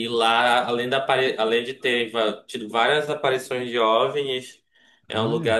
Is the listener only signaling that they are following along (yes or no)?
yes